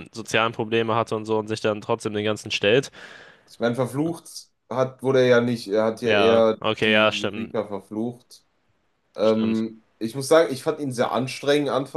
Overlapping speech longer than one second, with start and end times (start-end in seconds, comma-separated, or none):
6.0-7.5